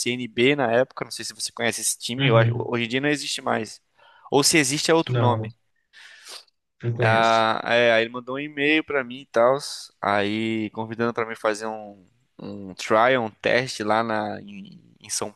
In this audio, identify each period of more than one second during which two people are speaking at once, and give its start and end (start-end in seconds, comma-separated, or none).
none